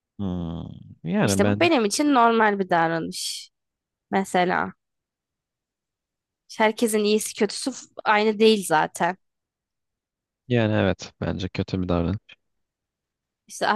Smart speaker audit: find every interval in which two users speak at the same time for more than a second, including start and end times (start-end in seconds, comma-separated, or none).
none